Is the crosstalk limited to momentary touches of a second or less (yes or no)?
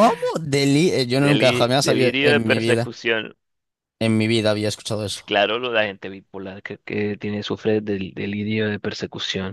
no